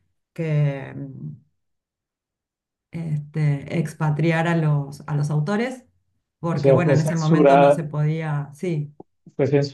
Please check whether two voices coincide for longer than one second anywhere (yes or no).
yes